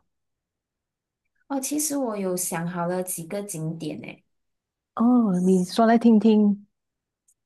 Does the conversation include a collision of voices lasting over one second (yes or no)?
no